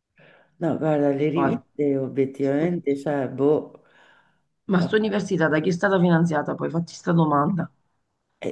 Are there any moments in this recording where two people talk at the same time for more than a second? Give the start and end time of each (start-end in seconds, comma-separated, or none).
none